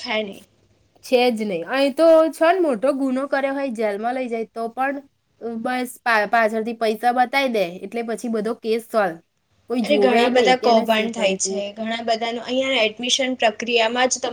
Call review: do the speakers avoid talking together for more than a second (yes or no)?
no